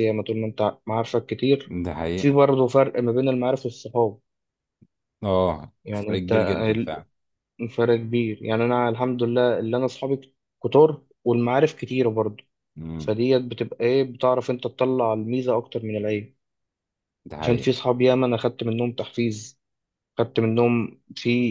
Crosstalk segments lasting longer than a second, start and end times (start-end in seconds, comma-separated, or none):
5.8-7.0